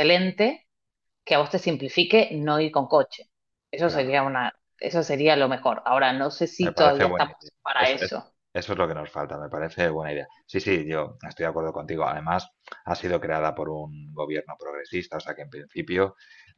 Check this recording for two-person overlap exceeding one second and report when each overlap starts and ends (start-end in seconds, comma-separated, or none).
6.6-8.3